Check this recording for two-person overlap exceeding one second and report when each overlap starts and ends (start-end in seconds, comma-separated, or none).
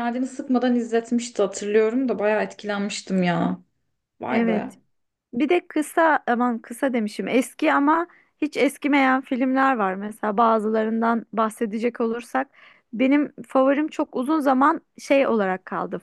none